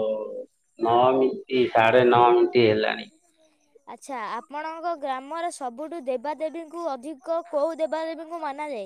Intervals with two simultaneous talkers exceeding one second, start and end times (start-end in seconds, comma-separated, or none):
none